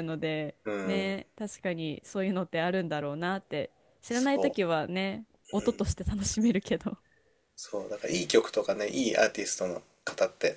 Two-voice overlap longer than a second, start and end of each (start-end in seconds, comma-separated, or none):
none